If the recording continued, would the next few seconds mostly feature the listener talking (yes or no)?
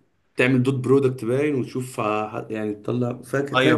yes